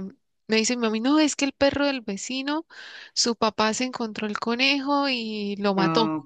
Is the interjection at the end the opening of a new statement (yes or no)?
no